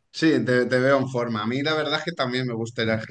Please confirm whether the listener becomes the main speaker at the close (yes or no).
no